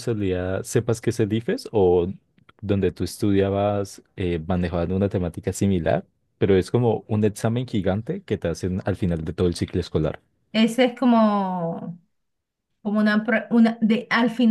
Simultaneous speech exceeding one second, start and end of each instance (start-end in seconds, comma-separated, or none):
none